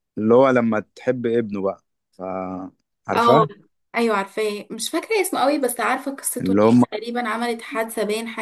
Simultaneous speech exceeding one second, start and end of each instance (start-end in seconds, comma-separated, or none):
none